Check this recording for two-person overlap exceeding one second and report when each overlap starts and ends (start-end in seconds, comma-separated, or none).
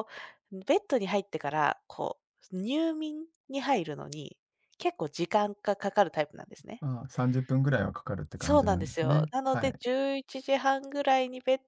8.4-9.8